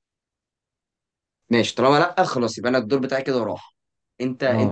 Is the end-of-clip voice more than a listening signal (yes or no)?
yes